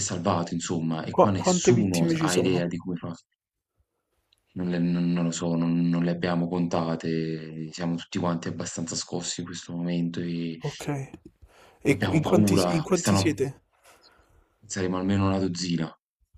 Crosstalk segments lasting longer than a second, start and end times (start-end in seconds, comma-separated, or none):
1.1-2.8, 11.9-13.4